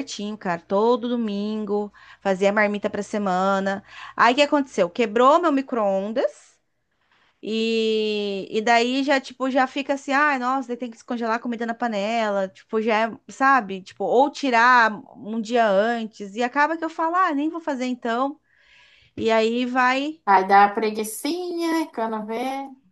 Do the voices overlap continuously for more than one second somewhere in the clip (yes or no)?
no